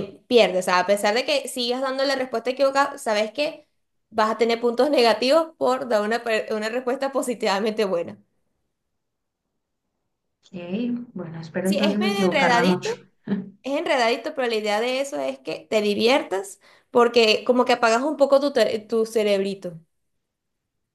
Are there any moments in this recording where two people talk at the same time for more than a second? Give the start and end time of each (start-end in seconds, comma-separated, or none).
11.6-12.9